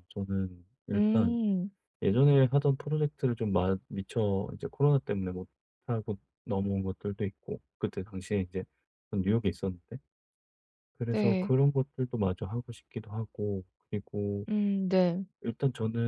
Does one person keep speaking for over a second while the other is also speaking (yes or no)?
no